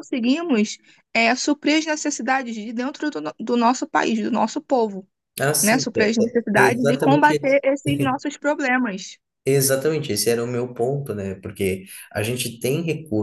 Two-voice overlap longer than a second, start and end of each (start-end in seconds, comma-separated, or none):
5.6-7.3